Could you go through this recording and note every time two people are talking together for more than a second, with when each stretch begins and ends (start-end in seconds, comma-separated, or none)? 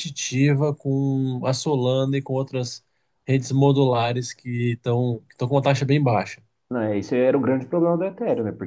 none